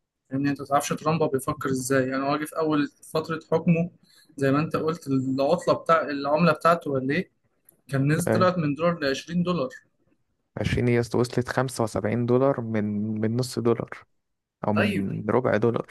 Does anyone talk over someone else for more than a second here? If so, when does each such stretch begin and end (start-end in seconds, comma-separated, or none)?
none